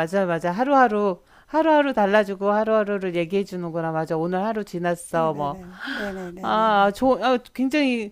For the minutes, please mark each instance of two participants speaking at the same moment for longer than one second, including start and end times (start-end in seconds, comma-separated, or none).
none